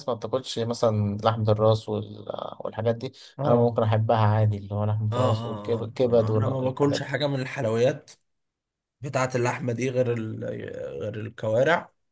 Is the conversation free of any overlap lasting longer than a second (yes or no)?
no